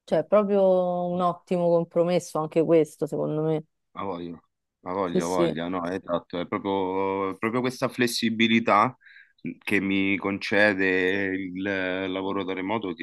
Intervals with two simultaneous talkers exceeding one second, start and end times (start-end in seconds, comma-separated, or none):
none